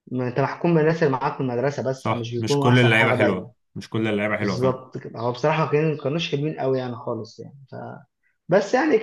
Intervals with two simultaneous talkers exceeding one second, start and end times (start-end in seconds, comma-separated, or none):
2.0-3.5